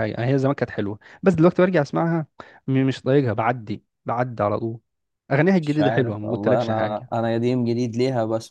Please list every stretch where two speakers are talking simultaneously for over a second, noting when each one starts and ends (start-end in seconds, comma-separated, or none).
5.6-7.1